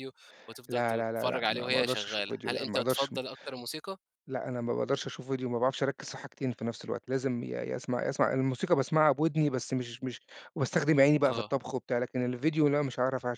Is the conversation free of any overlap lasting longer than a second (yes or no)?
no